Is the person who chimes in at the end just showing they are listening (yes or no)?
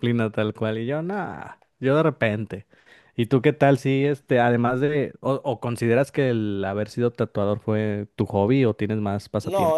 no